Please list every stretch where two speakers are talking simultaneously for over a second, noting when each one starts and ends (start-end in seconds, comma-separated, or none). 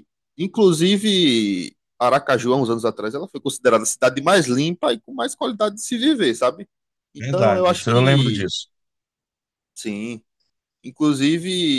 7.2-8.5